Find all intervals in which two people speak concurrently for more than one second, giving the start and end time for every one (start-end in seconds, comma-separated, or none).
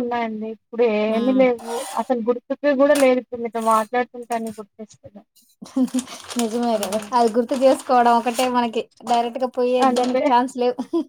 none